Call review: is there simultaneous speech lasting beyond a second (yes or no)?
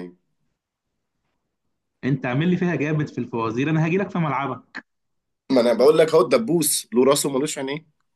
no